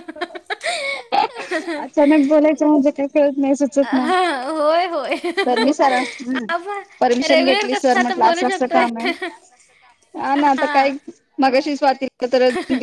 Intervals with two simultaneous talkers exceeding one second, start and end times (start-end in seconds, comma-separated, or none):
7.3-8.8